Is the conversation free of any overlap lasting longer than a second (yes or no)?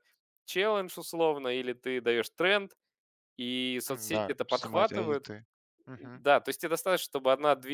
no